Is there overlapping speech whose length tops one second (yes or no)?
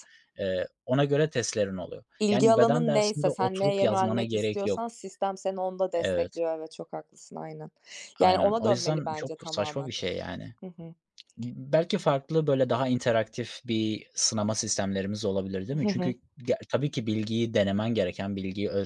yes